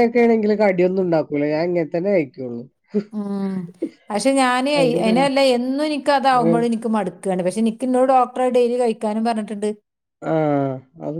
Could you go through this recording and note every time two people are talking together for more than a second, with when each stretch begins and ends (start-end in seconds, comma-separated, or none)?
none